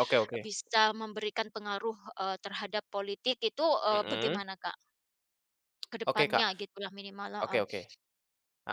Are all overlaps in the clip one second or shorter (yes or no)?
yes